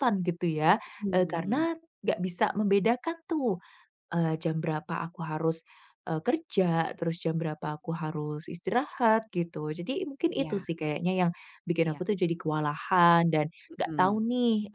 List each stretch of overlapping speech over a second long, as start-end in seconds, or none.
none